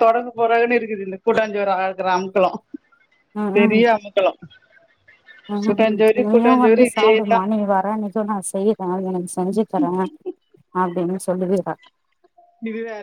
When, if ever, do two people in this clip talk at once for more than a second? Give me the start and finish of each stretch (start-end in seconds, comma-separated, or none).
5.7-7.4